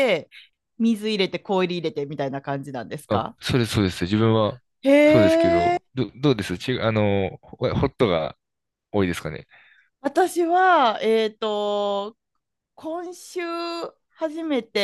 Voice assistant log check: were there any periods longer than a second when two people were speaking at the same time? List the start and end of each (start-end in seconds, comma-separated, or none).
none